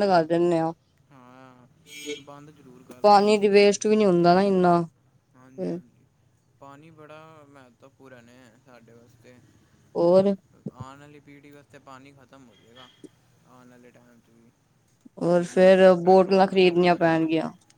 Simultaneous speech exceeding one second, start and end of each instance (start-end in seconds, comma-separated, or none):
15.4-17.3